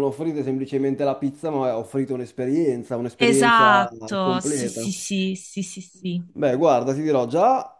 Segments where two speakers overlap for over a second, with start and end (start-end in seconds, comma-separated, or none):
3.2-4.9